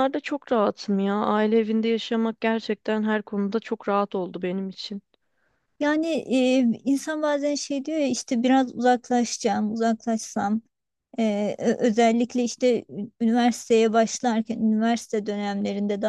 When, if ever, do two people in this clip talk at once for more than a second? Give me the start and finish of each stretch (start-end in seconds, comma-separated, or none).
none